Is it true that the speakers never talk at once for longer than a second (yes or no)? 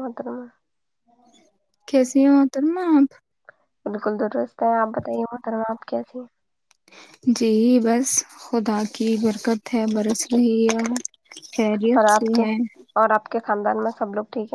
yes